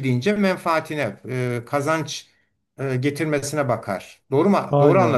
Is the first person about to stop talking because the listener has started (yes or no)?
yes